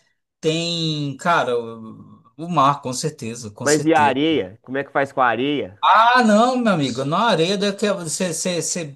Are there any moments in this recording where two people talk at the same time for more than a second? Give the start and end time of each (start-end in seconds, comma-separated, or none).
none